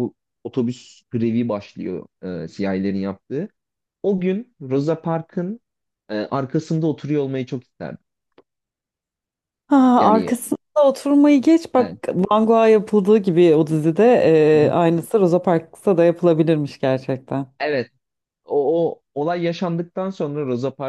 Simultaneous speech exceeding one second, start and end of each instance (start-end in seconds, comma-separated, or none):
none